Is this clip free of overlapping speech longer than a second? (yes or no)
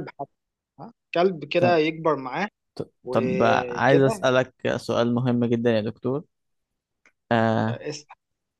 no